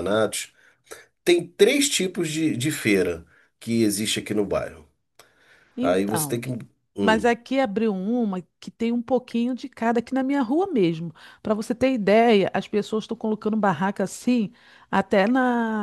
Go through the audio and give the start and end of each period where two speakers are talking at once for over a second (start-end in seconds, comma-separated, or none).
none